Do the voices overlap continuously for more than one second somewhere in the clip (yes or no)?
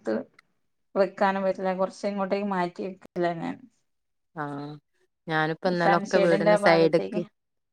yes